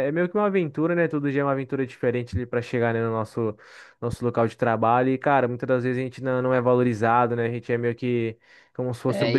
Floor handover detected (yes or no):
yes